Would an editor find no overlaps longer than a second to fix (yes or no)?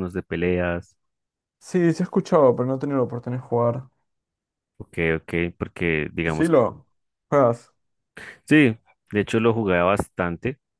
yes